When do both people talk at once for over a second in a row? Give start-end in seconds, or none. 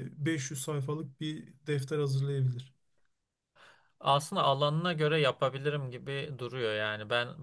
none